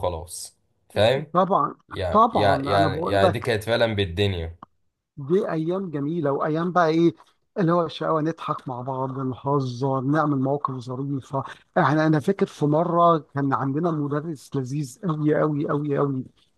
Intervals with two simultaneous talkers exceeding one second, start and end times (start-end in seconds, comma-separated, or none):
2.1-3.5